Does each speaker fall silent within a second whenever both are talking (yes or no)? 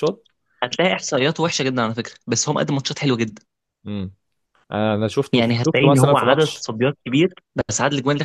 no